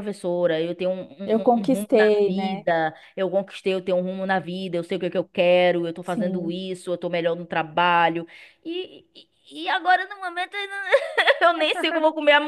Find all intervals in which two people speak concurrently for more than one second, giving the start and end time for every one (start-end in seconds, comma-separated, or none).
1.2-2.7